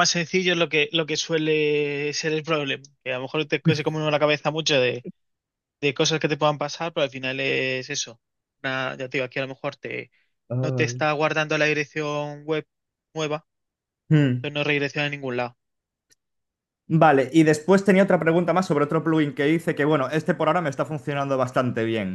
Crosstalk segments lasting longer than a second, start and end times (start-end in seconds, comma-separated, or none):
none